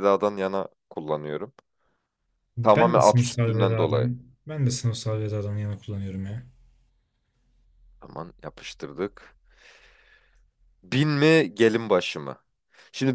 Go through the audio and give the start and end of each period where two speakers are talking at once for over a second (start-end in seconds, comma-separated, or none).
2.6-4.1